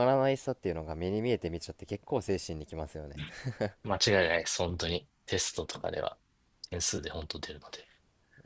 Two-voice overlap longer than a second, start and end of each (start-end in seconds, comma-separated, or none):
none